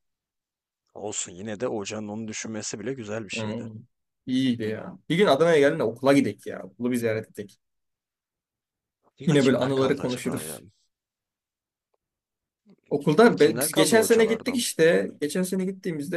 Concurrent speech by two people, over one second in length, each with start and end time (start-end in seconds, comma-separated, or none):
9.3-10.6, 13.0-14.6